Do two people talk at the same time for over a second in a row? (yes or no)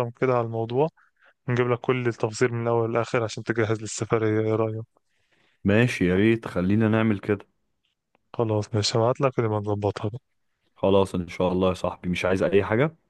no